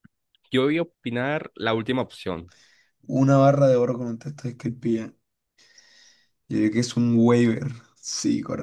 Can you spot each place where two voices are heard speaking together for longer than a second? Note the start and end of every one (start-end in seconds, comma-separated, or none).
none